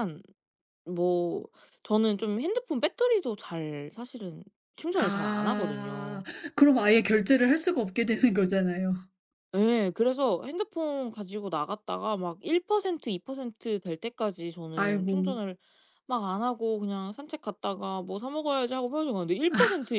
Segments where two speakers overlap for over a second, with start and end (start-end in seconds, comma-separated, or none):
5.0-6.2